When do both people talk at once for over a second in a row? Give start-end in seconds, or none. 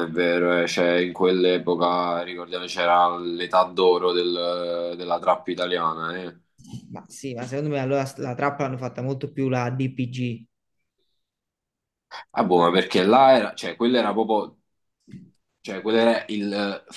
none